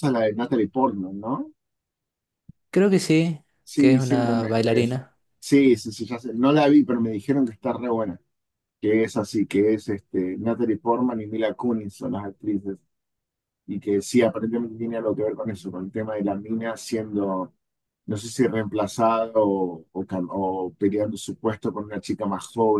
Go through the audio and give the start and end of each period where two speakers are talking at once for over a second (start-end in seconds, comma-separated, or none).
3.6-5.0